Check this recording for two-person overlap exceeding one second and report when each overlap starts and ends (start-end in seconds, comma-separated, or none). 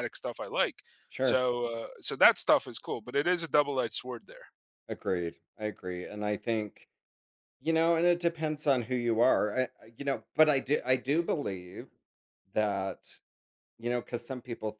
none